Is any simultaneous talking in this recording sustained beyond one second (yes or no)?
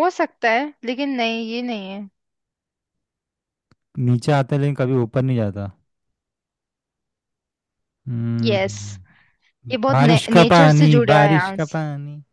yes